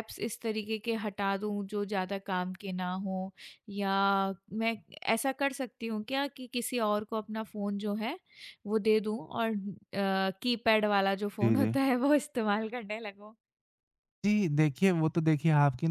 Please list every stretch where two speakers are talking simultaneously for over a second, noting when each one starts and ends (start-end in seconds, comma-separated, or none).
none